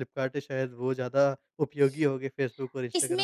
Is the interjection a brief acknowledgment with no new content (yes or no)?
no